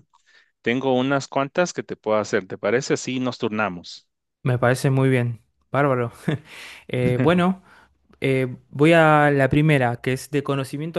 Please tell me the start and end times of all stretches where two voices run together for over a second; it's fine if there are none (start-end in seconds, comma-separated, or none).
none